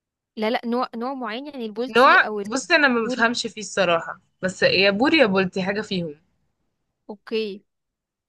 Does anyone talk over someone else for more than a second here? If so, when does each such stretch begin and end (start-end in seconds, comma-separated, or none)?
2.0-3.3